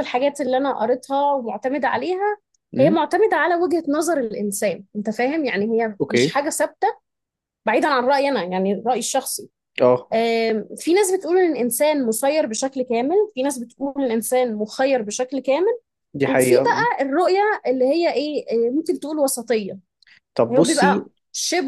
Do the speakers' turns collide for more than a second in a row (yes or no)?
no